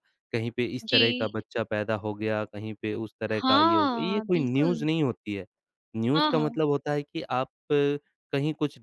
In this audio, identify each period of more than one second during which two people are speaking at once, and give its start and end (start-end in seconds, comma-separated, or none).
3.4-4.8